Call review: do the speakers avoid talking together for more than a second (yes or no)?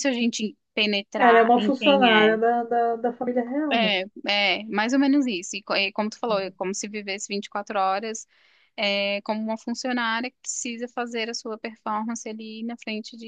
no